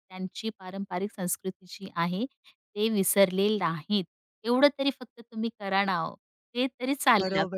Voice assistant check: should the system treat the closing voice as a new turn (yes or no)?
yes